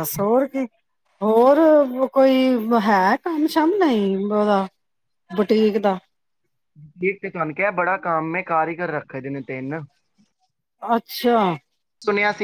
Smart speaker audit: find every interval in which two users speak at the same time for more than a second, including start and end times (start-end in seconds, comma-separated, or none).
none